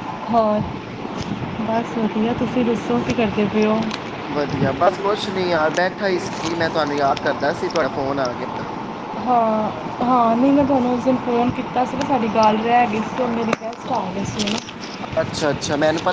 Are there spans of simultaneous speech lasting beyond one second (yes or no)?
no